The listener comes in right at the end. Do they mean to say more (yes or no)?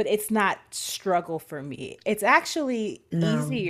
no